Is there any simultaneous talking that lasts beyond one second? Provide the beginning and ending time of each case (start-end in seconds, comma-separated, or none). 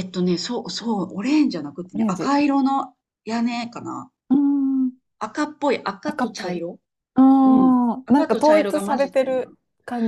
8.1-9.5